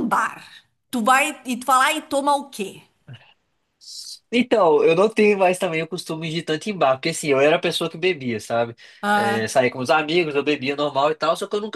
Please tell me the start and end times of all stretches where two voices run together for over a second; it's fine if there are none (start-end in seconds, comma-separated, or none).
none